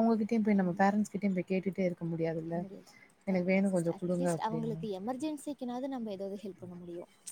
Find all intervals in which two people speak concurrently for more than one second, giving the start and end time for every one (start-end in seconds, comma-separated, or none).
3.3-4.8